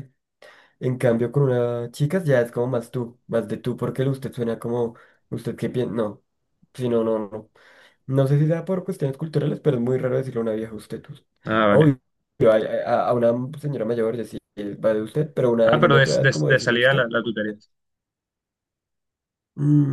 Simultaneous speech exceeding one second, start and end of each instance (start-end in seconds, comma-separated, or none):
15.7-17.1